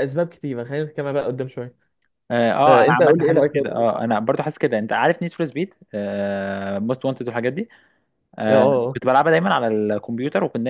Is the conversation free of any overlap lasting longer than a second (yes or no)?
no